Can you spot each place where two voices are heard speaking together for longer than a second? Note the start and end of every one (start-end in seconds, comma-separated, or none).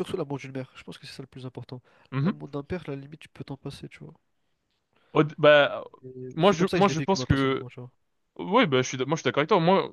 6.3-7.7